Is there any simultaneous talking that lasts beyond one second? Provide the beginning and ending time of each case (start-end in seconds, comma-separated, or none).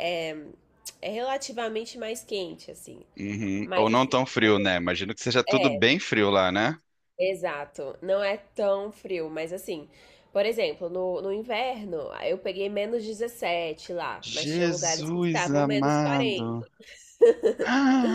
14.4-16.6